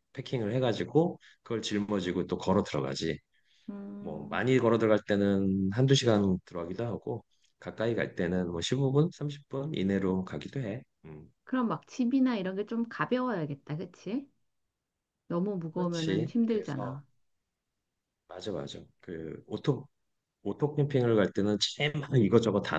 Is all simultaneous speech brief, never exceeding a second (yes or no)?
no